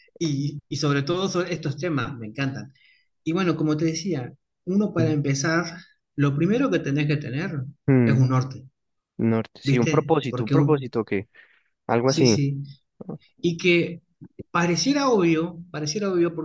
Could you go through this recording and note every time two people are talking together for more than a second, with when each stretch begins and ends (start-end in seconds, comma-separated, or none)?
9.6-10.9